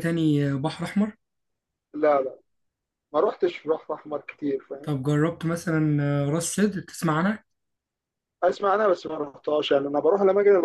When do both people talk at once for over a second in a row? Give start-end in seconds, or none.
none